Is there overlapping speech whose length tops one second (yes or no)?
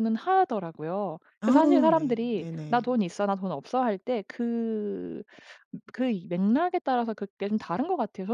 yes